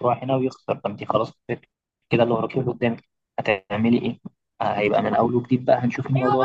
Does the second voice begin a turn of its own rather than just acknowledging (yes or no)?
yes